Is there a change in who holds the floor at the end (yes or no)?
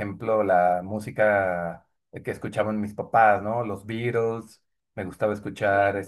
no